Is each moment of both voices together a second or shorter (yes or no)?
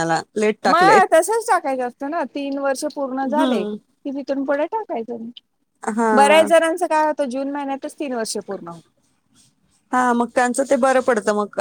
yes